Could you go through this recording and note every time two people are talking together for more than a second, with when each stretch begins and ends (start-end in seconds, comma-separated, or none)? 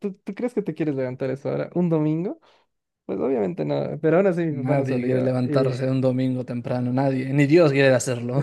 4.7-6.0